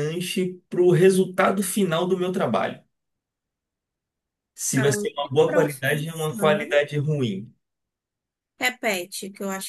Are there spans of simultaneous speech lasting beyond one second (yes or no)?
yes